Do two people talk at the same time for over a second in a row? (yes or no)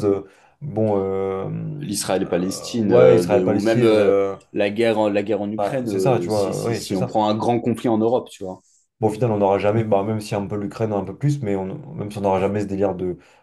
yes